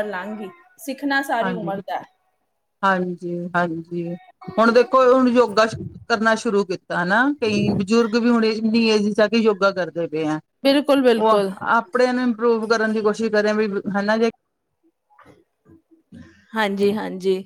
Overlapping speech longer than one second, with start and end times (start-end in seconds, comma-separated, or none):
none